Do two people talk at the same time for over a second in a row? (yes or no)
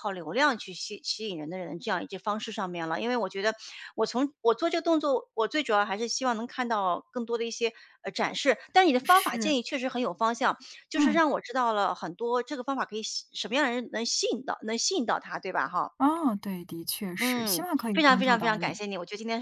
yes